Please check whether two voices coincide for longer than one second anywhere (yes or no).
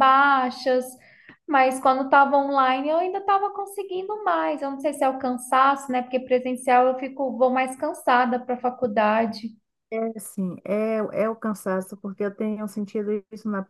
no